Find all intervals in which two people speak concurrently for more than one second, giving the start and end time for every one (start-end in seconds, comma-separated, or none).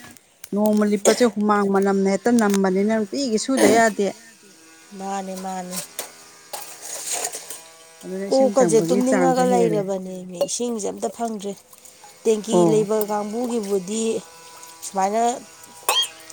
8.3-9.8